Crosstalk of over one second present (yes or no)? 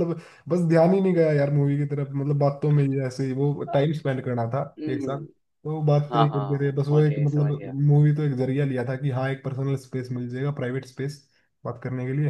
yes